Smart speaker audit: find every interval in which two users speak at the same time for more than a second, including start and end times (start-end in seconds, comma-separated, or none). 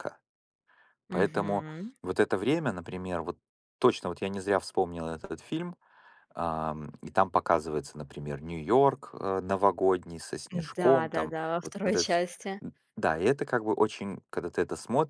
10.8-12.2